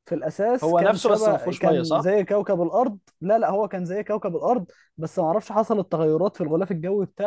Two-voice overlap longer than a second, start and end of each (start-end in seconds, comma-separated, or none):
0.6-2.1